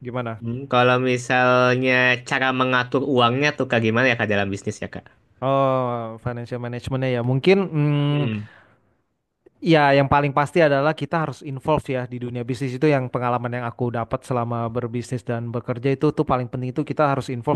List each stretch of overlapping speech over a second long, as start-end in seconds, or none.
none